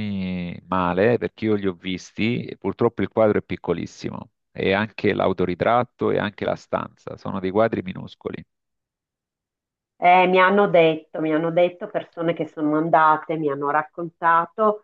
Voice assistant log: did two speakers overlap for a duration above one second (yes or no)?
no